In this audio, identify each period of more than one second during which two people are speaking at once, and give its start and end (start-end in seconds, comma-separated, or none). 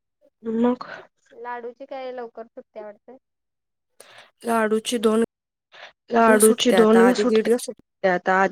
6.3-7.8